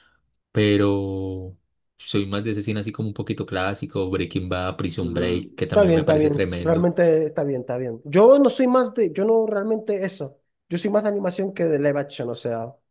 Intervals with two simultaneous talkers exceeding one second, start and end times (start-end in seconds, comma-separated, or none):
5.0-6.9